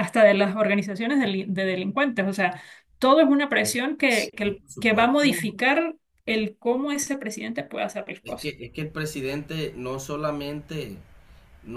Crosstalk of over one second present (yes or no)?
yes